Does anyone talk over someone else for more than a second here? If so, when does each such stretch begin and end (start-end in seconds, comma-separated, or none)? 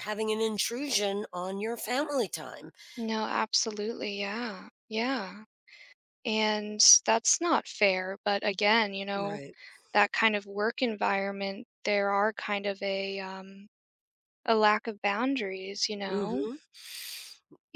none